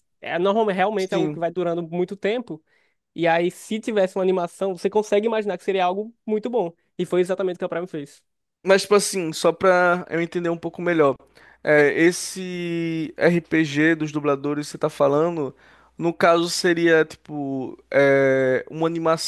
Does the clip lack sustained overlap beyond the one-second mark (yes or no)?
yes